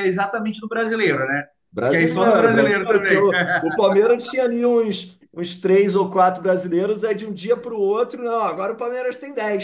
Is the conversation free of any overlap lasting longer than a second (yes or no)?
no